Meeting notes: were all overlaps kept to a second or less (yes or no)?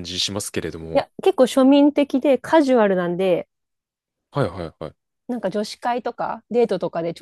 yes